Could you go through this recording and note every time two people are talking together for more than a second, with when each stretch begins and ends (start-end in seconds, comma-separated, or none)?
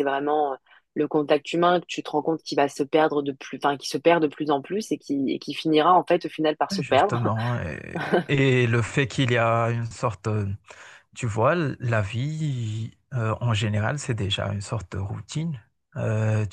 none